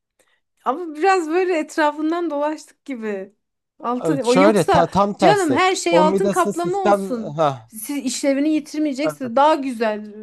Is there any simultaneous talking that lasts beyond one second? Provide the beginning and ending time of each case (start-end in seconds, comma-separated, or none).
4.0-7.7